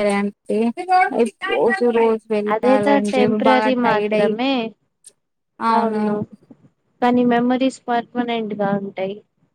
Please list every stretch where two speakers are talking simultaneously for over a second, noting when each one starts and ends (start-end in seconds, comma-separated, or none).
2.5-4.3